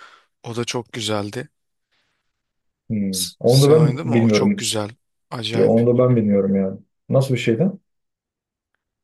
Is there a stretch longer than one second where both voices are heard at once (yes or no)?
yes